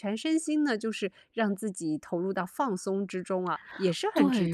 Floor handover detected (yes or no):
yes